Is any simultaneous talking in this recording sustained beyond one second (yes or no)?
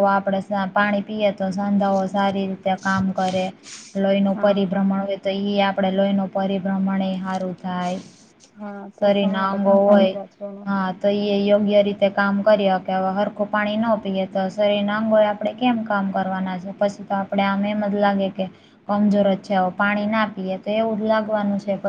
no